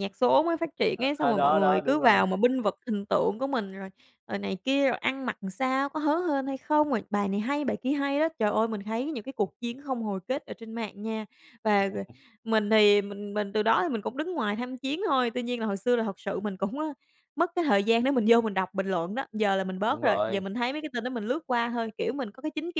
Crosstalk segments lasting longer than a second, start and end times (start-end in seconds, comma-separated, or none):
0.9-2.2